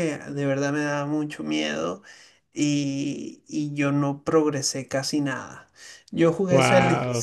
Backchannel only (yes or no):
yes